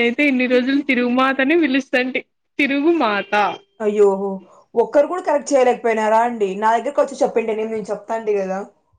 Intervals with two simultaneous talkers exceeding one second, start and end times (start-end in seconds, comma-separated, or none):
none